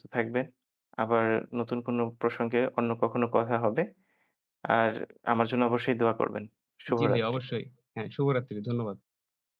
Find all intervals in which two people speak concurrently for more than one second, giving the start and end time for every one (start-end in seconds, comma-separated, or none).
none